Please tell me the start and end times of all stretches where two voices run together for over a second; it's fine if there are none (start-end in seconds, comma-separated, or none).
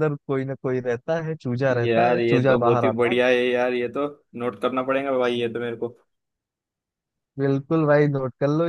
1.8-3.2